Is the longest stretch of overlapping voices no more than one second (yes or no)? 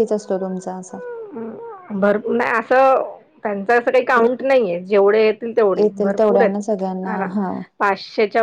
no